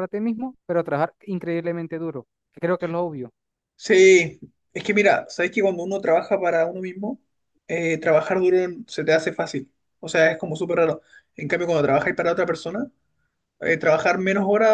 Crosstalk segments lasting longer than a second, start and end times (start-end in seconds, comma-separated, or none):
none